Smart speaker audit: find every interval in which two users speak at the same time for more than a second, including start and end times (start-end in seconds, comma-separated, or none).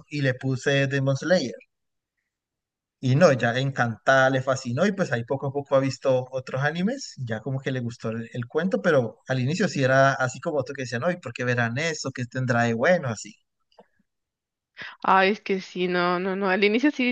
none